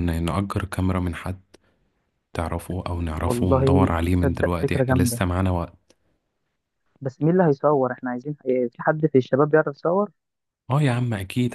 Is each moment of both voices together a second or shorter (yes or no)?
no